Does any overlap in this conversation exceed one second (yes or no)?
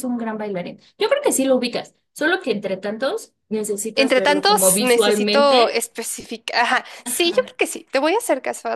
yes